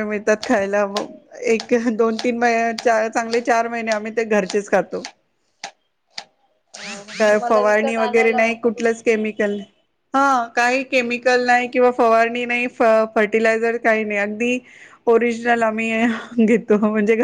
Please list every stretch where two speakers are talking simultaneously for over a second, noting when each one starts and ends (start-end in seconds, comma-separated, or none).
7.2-9.2